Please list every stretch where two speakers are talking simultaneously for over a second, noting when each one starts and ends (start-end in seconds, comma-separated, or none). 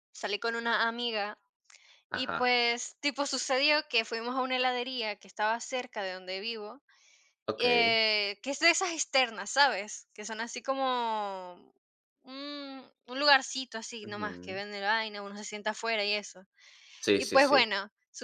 none